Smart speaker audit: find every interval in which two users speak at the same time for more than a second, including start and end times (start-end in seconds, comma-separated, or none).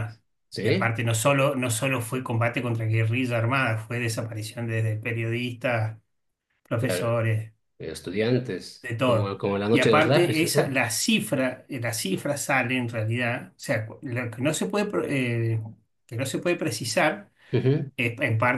8.8-10.8